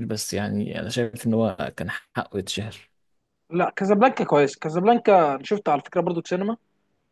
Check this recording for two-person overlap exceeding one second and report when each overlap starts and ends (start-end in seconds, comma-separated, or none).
none